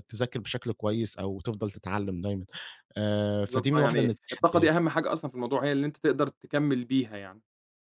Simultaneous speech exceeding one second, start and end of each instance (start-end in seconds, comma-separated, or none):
3.4-4.7